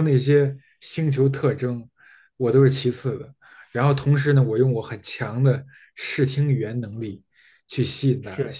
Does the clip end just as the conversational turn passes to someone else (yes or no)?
no